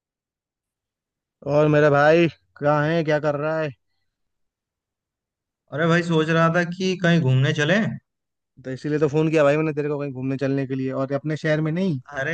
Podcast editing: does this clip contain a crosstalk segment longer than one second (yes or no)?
no